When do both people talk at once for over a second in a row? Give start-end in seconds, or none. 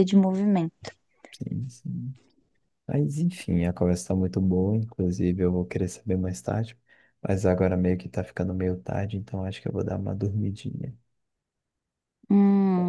none